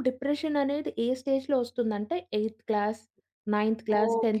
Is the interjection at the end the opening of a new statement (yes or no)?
yes